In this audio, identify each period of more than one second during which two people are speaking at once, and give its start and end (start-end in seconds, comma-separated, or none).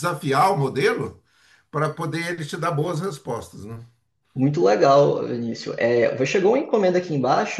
none